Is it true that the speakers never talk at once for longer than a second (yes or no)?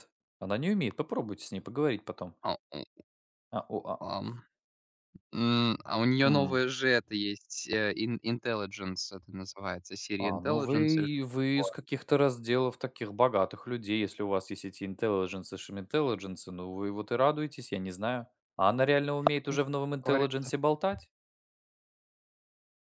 no